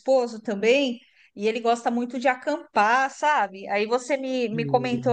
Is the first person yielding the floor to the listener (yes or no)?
no